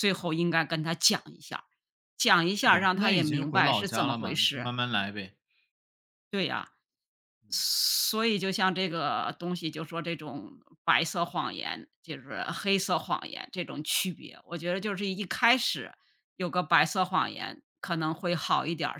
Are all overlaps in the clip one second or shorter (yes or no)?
no